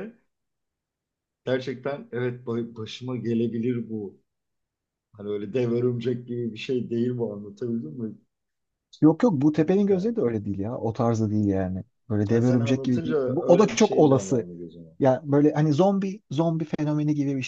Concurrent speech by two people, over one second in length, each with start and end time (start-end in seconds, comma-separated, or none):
12.3-14.4